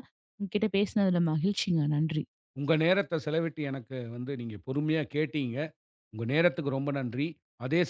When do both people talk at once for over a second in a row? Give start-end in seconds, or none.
none